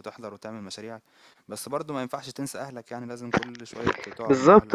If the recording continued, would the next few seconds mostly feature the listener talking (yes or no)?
yes